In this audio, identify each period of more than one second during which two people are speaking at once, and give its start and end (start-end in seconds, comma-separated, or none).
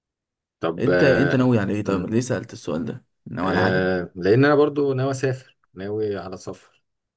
0.8-2.1